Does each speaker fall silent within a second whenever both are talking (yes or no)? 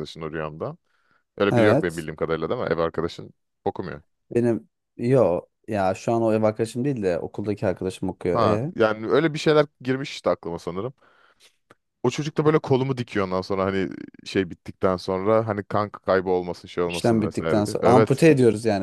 no